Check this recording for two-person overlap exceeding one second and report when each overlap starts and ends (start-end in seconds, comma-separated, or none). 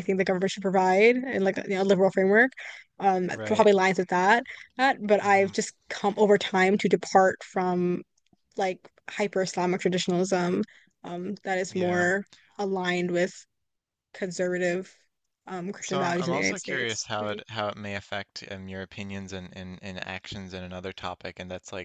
15.8-17.4